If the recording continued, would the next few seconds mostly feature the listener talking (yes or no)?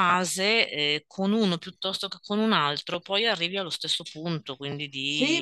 yes